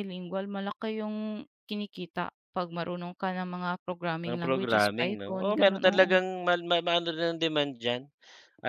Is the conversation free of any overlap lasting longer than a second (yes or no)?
no